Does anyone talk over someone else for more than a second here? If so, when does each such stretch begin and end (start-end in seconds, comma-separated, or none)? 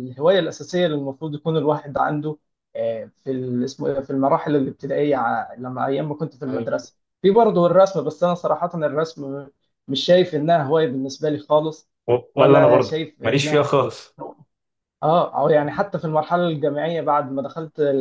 12.3-13.7